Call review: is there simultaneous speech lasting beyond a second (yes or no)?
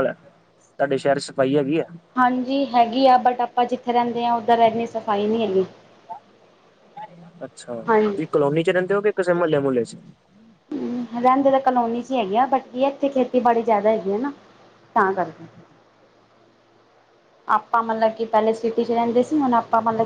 no